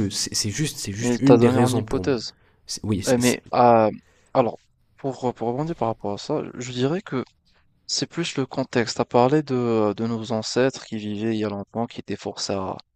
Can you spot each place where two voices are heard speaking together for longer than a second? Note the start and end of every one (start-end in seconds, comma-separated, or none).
1.0-2.2